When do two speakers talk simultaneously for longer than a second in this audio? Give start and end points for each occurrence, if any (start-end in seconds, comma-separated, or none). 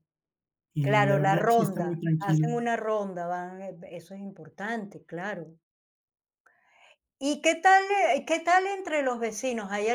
0.8-2.5